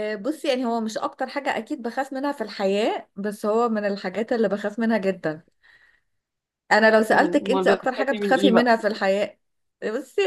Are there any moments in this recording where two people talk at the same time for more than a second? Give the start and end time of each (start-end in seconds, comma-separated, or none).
7.1-8.8